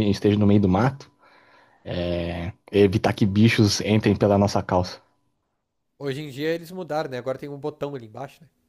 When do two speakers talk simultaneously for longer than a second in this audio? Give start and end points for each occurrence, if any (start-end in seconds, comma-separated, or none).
none